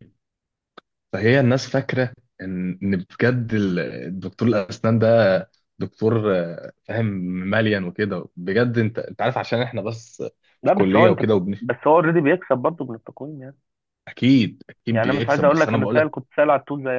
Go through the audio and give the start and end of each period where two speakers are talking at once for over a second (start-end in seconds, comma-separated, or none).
14.9-16.1